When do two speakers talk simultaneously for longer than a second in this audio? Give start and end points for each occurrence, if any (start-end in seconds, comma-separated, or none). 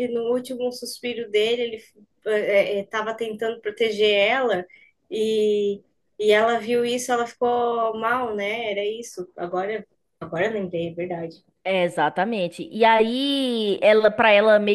none